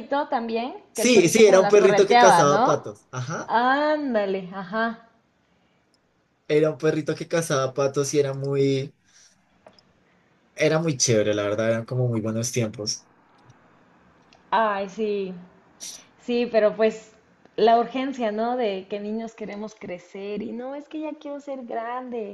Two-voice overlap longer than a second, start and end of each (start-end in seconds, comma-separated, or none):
1.0-2.8